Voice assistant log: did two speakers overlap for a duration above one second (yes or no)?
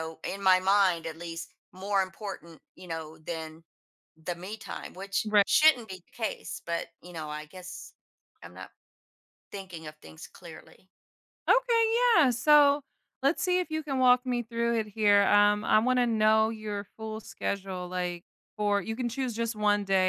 no